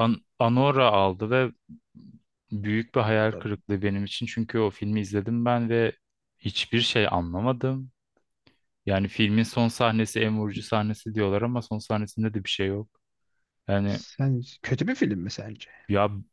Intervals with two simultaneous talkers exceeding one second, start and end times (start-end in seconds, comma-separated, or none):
none